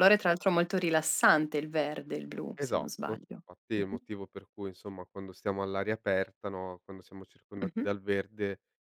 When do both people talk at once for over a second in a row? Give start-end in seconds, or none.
2.6-4.0